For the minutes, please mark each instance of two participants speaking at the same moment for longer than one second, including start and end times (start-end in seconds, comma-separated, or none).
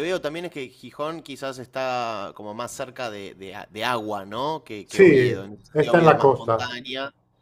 4.8-6.8